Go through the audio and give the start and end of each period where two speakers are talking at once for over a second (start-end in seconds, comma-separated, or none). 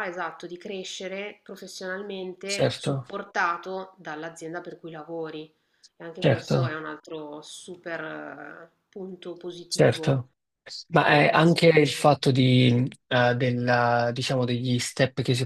none